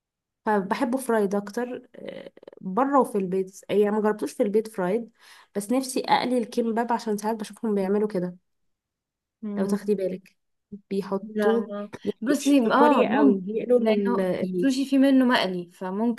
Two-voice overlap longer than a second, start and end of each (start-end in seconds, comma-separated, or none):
12.3-14.7